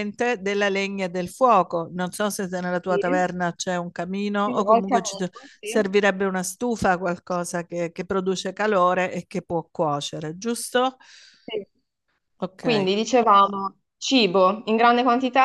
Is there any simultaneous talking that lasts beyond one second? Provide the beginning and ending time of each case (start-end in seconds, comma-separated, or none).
4.4-5.9